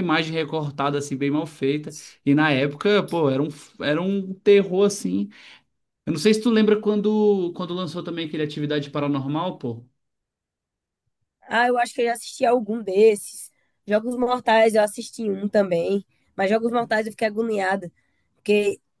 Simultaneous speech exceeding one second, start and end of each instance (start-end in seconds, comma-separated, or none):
none